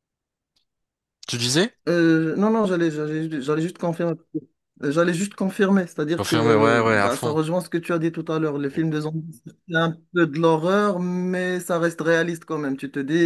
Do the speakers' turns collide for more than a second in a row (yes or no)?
yes